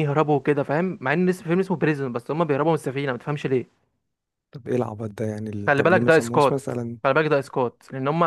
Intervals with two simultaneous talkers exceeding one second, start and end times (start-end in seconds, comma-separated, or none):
5.7-7.0